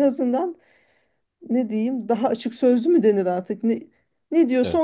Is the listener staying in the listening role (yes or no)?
yes